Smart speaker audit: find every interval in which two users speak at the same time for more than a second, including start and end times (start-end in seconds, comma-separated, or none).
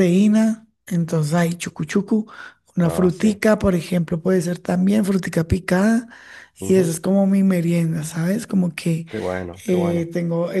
none